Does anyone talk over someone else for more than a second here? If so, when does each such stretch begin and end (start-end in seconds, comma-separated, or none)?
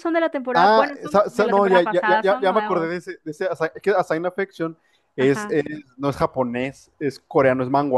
0.5-3.0